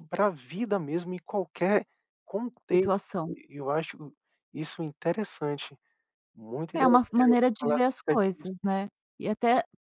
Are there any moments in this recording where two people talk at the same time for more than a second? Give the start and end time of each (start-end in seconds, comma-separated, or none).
6.8-8.5